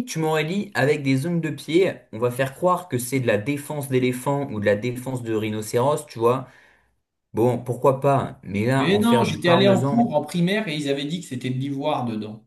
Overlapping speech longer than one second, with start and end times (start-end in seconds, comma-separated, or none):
8.8-10.0